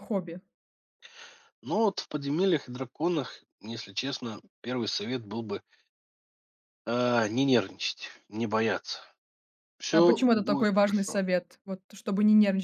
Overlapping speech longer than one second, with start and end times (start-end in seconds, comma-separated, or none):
9.9-11.2